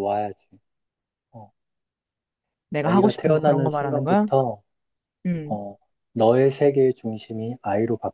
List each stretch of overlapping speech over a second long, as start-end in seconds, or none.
2.8-4.3